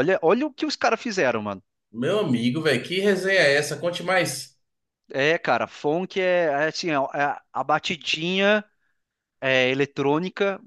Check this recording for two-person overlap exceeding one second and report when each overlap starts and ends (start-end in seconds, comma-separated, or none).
none